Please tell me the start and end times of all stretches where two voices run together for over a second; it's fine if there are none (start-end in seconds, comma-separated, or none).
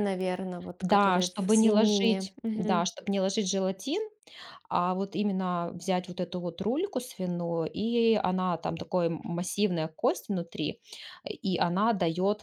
0.8-2.8